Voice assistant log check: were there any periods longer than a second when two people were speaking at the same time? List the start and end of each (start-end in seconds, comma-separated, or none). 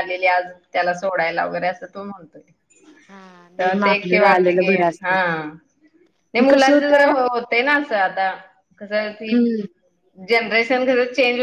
3.6-5.2